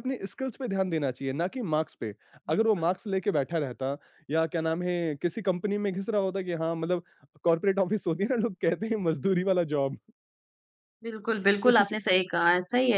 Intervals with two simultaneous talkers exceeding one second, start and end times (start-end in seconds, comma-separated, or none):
none